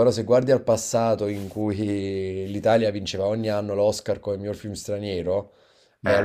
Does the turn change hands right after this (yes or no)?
no